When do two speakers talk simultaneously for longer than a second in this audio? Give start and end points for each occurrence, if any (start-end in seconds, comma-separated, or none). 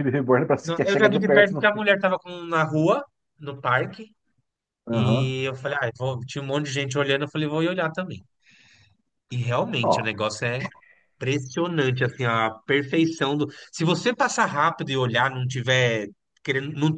0.6-1.9